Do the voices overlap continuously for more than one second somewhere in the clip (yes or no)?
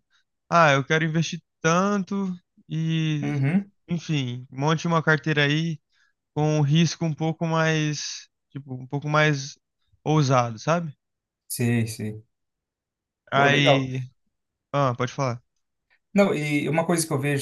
no